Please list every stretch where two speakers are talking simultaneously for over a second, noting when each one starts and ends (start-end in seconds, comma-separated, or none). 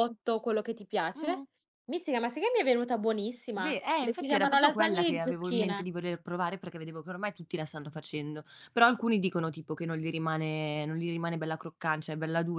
3.5-5.9